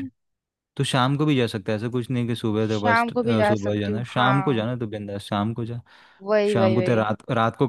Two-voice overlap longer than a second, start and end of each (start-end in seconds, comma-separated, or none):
2.6-4.6